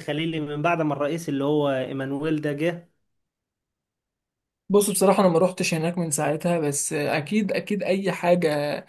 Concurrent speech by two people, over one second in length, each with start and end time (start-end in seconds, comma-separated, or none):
none